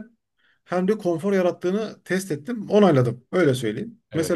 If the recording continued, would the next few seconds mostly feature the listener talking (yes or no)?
no